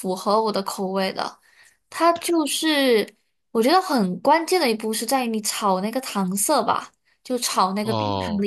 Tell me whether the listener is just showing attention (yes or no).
yes